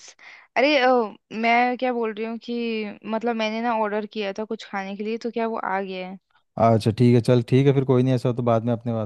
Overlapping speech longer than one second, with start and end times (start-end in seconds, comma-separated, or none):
none